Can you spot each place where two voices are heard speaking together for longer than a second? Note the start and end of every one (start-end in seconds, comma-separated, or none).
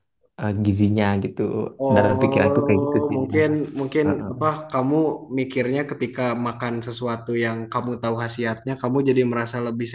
1.9-3.5